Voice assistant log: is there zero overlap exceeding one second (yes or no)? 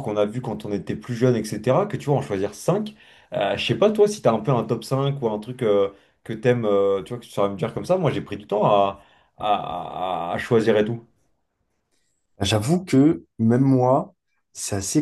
yes